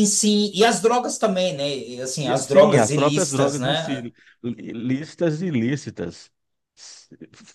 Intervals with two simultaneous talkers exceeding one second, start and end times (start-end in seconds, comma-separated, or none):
2.2-4.0